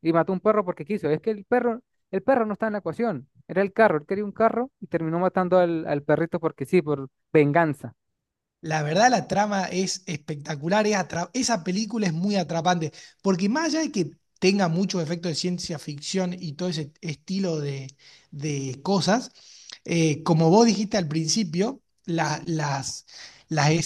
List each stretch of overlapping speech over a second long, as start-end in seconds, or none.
none